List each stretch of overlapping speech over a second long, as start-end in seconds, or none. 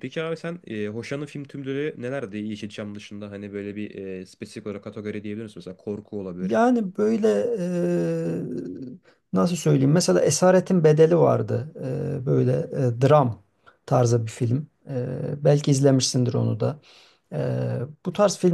none